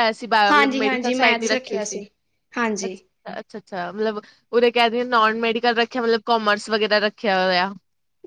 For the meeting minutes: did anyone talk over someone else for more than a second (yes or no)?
yes